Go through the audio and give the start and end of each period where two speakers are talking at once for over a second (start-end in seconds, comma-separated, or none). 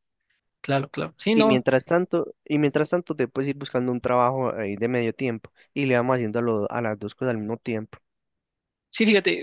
none